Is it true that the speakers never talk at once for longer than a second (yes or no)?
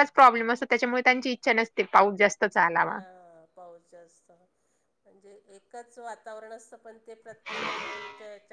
yes